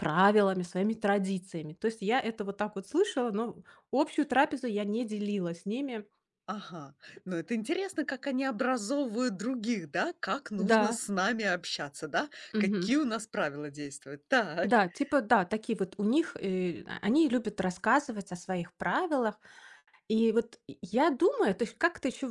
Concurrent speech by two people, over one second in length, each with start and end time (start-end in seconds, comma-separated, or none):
none